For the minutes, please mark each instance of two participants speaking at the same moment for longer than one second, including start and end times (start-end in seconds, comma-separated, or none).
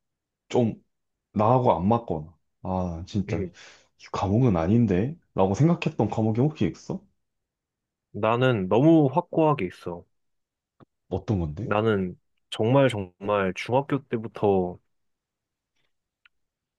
none